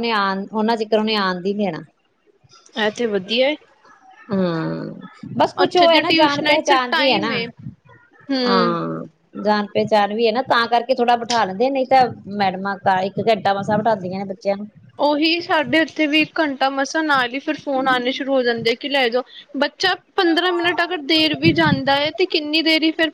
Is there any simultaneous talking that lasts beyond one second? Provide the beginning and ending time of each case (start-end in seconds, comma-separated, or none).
5.6-7.3